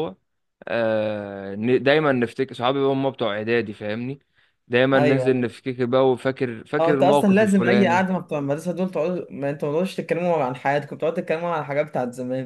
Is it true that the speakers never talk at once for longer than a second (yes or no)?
no